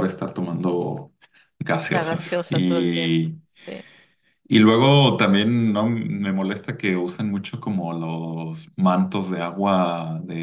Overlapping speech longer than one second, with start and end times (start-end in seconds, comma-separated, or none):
1.9-3.4